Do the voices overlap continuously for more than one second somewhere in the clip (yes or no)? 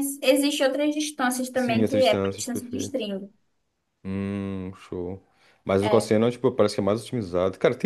yes